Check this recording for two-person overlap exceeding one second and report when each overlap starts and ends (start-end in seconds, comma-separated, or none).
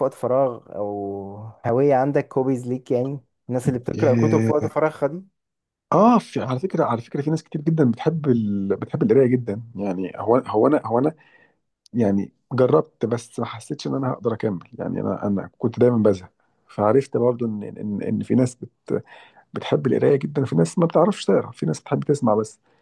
none